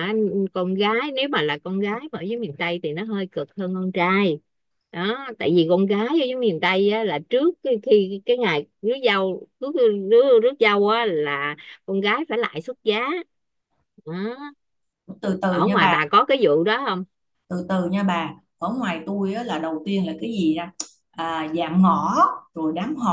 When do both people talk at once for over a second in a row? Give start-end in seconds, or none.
none